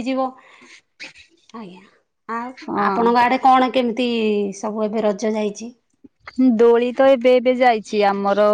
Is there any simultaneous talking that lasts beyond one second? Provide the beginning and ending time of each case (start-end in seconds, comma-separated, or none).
none